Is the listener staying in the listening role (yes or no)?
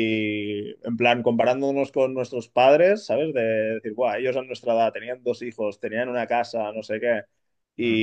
yes